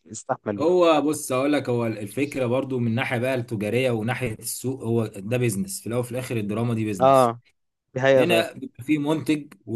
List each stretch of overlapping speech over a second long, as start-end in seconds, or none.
none